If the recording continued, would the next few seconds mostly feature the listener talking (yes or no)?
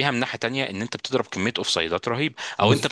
no